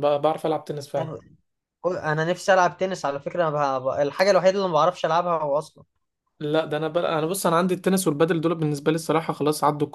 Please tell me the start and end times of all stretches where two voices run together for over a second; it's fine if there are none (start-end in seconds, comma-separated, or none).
none